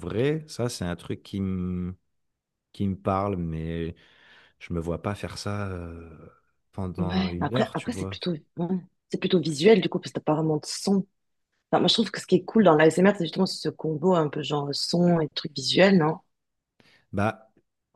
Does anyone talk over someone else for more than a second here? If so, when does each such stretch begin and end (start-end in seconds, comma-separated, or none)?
7.0-8.2